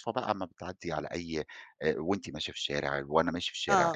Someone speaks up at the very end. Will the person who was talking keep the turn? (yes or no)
no